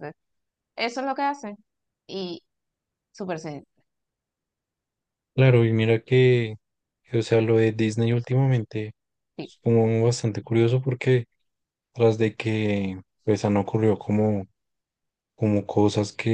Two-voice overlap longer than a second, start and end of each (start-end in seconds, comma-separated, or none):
none